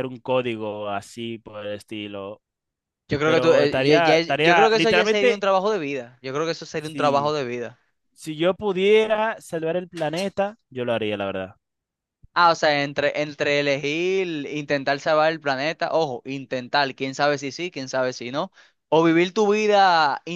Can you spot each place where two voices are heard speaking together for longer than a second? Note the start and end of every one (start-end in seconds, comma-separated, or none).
3.2-5.5